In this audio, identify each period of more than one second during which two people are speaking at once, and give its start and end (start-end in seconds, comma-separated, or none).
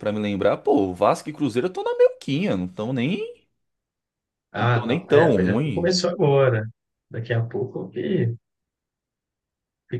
4.6-5.9